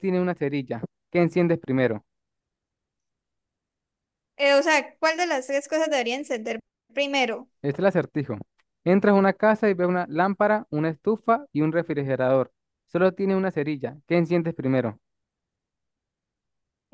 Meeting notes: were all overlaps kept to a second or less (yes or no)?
yes